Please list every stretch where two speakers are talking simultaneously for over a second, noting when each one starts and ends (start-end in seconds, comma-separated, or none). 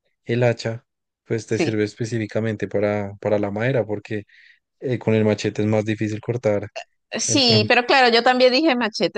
none